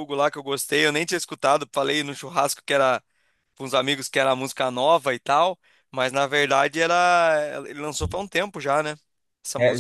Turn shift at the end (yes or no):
yes